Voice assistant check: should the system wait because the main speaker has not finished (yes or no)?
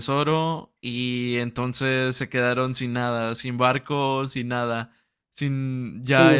no